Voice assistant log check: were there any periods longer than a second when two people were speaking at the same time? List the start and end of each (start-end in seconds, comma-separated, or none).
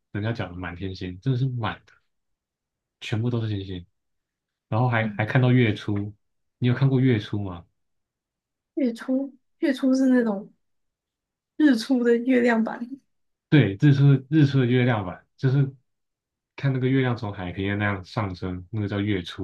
none